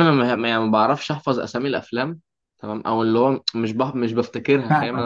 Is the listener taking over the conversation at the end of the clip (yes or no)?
no